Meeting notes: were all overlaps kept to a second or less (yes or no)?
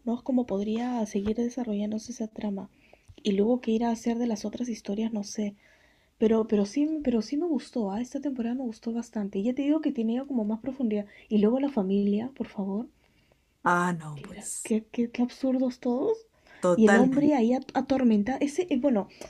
yes